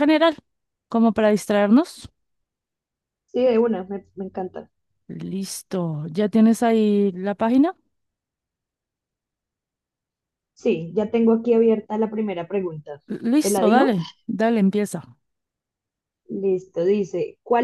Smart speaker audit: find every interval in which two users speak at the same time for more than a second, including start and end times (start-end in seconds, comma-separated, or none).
none